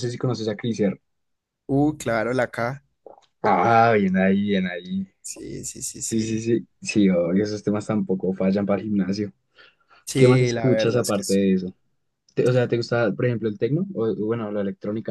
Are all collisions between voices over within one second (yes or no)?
no